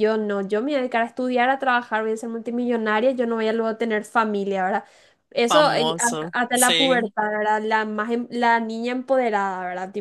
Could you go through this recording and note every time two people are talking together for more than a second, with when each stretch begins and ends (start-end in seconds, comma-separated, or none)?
5.5-7.1